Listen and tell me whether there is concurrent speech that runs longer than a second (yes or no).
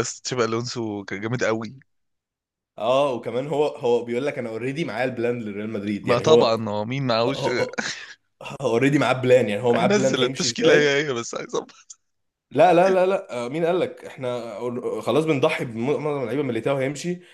yes